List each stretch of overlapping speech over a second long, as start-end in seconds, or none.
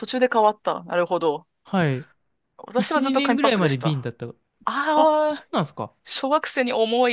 2.8-4.1